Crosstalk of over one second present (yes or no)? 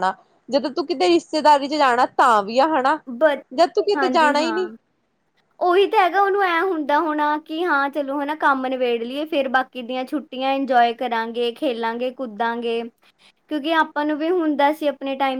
no